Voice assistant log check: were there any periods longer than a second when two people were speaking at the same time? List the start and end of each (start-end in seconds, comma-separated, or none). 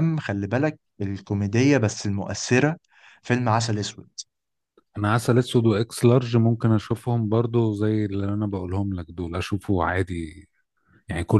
none